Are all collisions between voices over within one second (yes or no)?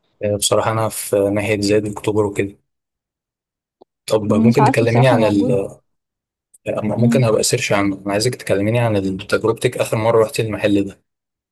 no